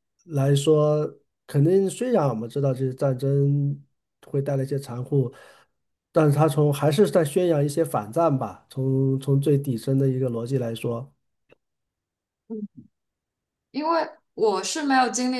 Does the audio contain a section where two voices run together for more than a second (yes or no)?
no